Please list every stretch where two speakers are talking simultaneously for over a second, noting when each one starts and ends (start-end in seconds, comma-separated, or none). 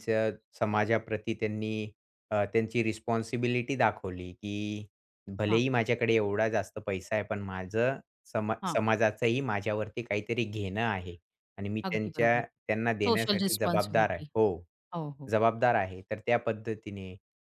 13.1-14.3